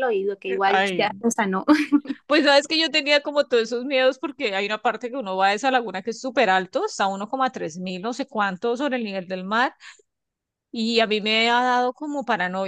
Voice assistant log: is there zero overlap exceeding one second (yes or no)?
yes